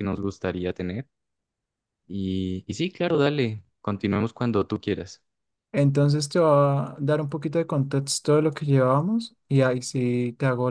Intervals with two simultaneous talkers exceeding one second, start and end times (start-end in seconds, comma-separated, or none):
none